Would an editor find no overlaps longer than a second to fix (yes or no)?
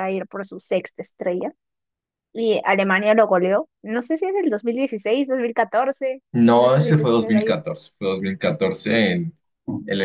no